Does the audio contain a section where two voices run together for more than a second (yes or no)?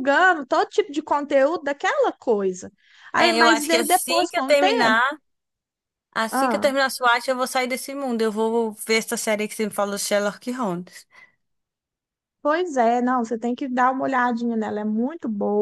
yes